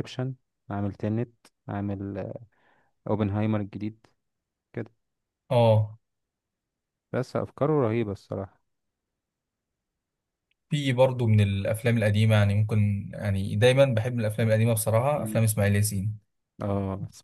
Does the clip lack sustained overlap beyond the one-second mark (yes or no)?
yes